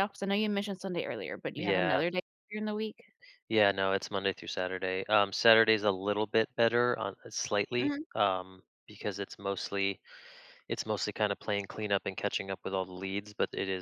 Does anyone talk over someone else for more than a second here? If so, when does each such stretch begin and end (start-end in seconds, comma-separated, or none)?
none